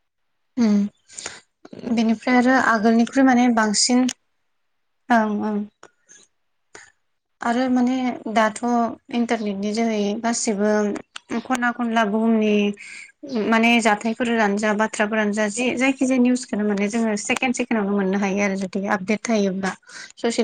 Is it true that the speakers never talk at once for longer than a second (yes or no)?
no